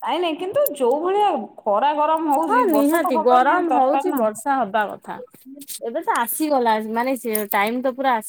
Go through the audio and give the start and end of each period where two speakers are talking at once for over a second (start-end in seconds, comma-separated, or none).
2.5-4.2